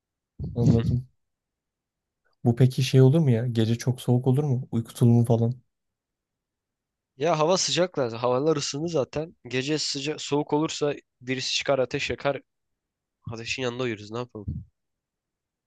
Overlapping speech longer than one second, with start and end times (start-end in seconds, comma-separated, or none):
none